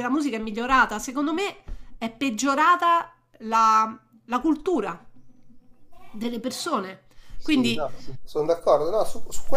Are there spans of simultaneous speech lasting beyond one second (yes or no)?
no